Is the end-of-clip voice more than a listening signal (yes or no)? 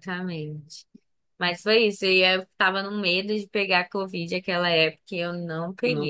no